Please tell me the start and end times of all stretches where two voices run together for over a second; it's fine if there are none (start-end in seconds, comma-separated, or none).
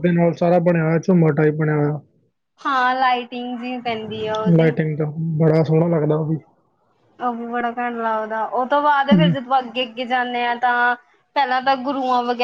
none